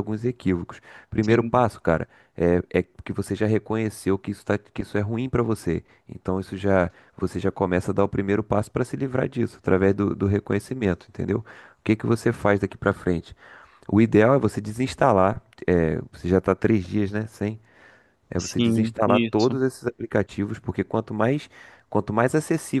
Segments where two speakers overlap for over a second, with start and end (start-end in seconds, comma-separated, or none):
18.4-19.6